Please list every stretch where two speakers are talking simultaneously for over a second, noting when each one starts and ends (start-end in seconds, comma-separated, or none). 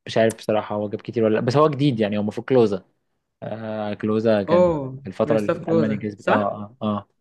4.5-6.5